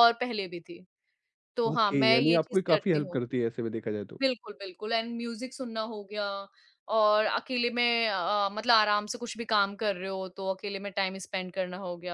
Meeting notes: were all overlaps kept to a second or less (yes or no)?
no